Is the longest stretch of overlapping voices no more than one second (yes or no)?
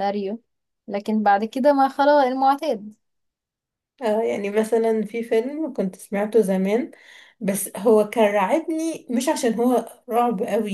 yes